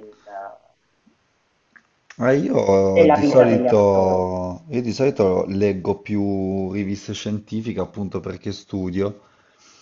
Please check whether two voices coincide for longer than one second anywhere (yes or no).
yes